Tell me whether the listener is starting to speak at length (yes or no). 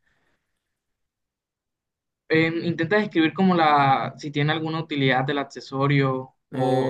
yes